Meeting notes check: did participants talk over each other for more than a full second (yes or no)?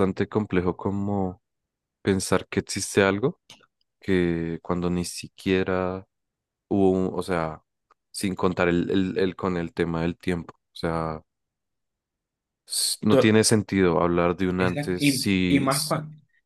yes